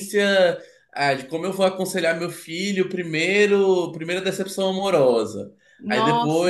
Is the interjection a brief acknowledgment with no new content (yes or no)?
yes